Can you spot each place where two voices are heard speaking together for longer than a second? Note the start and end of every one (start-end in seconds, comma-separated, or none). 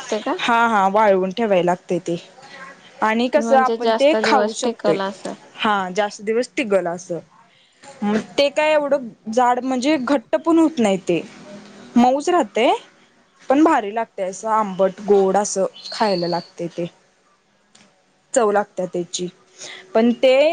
3.4-5.0